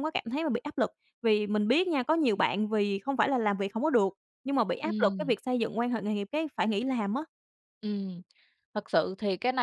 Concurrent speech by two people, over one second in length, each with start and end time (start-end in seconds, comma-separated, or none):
none